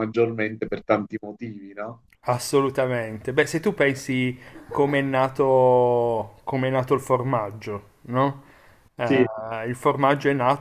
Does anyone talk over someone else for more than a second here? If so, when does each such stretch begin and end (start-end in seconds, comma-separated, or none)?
none